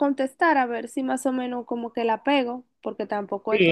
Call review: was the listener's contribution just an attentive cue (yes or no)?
no